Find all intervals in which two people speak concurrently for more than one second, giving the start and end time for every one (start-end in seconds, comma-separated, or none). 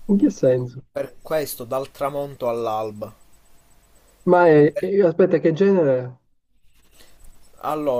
none